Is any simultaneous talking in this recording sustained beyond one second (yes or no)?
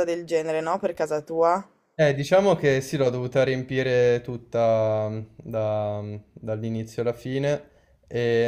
no